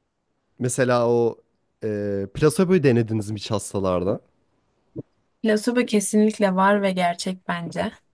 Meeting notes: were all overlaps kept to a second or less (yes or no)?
yes